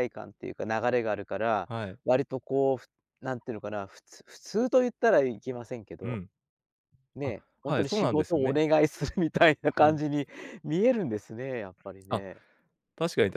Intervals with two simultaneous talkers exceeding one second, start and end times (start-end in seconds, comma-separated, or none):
7.2-8.6